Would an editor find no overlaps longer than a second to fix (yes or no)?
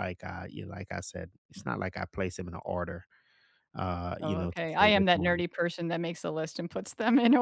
no